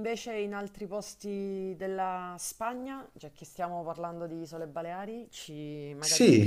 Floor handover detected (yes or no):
yes